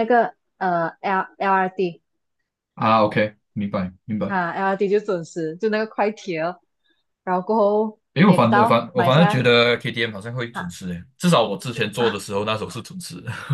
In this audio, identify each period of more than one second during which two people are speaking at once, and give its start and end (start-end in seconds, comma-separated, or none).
8.1-9.4